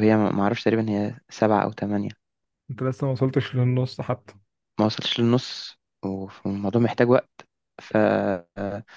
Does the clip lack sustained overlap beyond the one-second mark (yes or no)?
yes